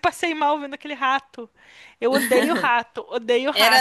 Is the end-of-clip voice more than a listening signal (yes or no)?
yes